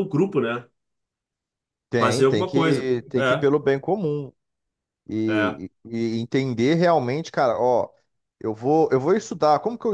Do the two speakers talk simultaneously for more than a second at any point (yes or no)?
yes